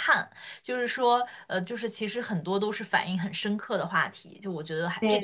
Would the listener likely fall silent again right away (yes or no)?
no